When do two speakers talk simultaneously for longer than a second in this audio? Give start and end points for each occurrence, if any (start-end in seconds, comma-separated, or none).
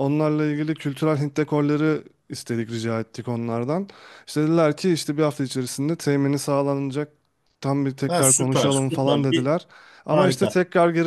8.1-9.5